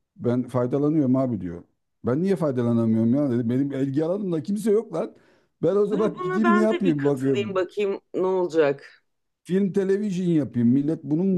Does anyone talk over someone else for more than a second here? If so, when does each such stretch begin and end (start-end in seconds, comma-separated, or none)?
5.9-7.6